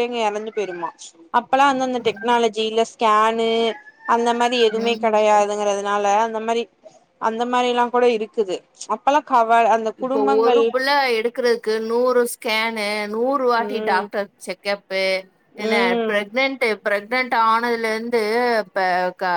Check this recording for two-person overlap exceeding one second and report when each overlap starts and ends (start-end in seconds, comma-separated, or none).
none